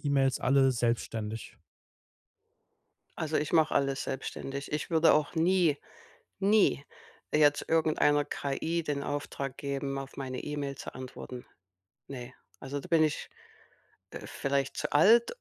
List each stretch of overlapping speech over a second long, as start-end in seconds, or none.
none